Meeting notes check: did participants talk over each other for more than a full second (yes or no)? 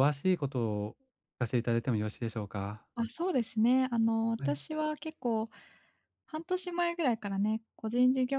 no